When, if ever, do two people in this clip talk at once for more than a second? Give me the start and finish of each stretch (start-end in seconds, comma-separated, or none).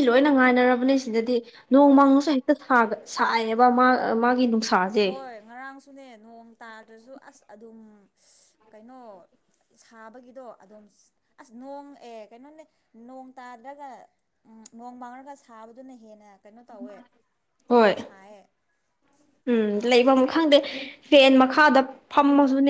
none